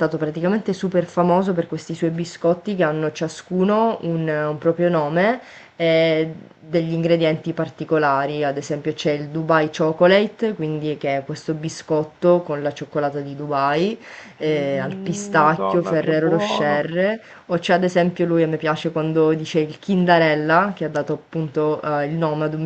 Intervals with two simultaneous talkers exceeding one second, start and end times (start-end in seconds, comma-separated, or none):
14.4-16.9